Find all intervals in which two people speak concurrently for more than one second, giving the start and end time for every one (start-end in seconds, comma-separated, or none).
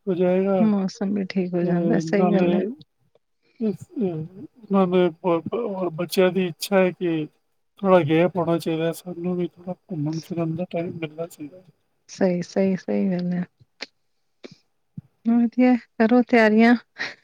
0.7-2.5